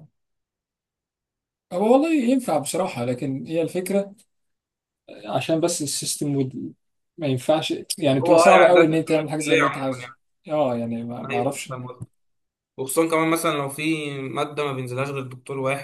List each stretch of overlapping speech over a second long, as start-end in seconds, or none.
8.2-10.1